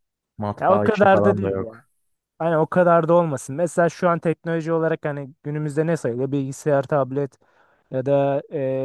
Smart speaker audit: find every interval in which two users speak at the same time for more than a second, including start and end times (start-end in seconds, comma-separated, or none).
0.6-1.8